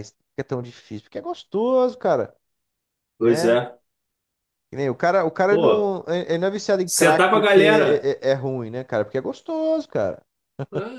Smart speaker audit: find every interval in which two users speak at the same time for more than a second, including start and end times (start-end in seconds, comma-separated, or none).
6.8-8.1